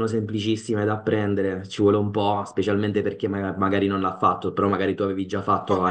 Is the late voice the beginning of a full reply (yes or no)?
yes